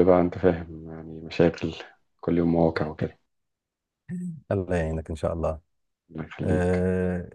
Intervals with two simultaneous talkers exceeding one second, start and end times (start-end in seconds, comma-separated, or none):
none